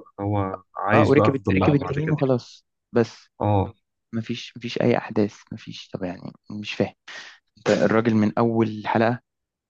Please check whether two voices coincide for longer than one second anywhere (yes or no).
yes